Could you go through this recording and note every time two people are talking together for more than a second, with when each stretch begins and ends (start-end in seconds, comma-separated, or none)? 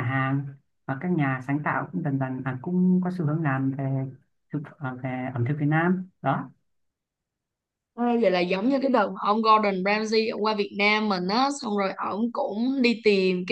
none